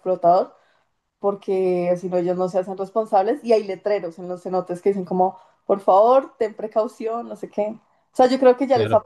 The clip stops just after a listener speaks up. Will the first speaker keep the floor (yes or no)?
yes